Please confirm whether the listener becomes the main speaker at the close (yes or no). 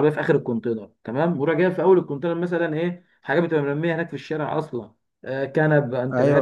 no